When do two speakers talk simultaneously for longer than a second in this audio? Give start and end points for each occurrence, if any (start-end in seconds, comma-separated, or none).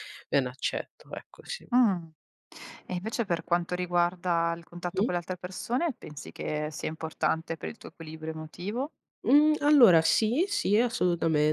none